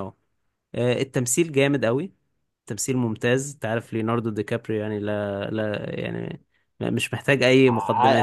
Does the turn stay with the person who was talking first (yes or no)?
no